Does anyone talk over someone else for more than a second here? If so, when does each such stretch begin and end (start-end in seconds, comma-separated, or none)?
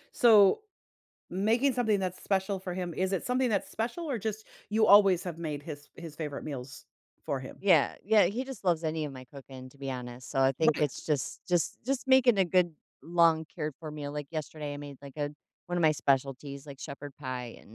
none